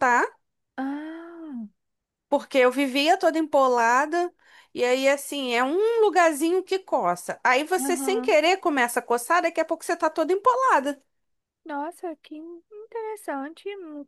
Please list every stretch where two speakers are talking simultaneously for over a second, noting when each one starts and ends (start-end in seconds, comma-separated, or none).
none